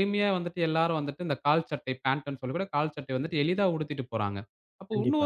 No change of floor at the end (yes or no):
yes